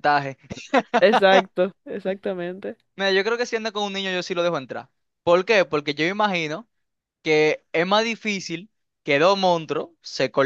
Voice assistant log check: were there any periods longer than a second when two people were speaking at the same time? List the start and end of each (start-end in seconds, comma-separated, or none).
none